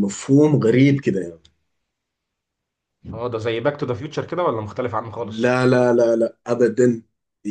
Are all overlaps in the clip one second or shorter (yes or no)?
yes